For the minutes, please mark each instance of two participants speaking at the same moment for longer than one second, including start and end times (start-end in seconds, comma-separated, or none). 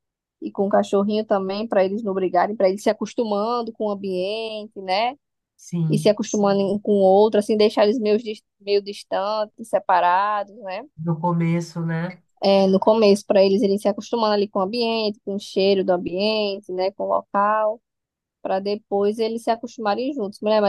none